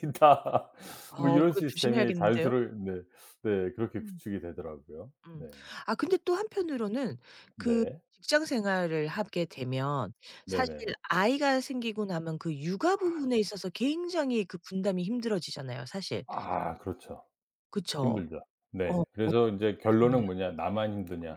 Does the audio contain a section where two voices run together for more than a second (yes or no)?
yes